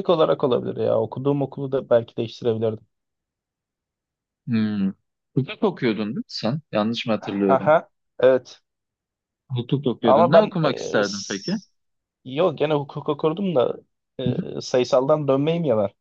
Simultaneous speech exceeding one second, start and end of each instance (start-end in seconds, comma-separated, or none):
10.0-11.5